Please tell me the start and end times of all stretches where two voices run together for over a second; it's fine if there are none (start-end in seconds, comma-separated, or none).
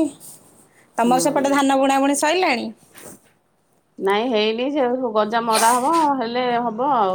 none